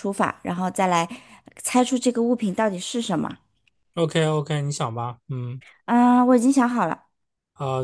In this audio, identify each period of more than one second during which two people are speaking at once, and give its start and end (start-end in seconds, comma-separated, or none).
none